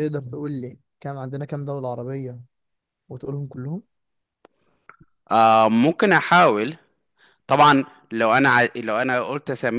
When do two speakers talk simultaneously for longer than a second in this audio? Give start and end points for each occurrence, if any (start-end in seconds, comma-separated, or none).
none